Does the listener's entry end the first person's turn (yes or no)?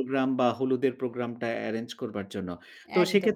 no